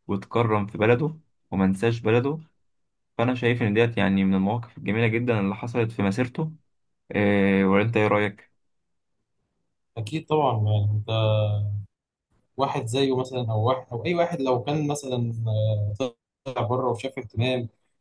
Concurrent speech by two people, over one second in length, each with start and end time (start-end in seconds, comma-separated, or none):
none